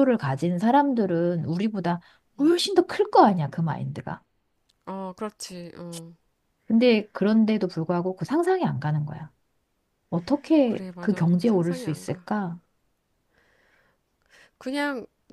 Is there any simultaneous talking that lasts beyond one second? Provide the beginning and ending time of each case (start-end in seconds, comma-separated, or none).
10.6-12.3